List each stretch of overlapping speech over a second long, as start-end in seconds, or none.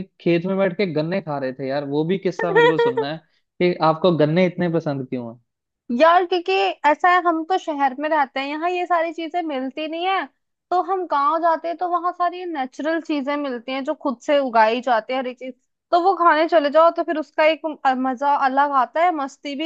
none